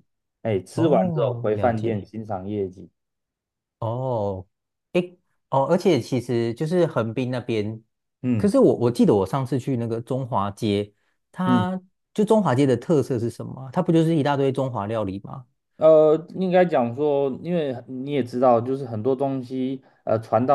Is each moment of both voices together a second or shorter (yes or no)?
no